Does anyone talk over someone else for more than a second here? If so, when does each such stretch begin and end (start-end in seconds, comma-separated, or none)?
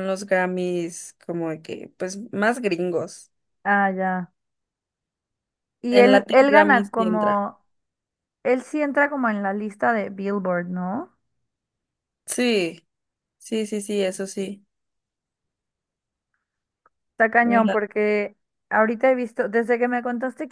5.9-7.4